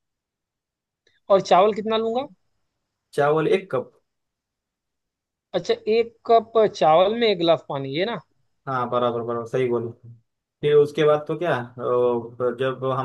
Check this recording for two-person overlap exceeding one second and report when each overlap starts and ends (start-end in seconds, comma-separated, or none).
none